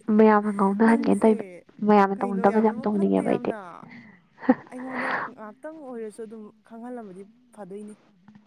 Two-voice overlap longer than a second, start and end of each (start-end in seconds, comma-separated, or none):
2.1-3.5